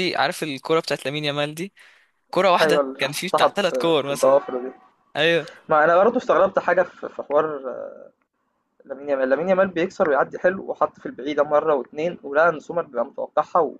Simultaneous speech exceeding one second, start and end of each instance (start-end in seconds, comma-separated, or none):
2.6-4.4